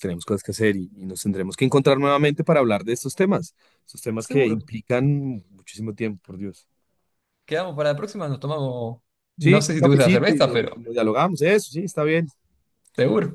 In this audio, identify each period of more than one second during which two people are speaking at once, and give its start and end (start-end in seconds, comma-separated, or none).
9.4-10.9